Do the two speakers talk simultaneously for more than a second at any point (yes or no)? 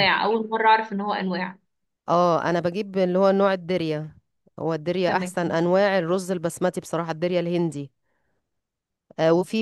no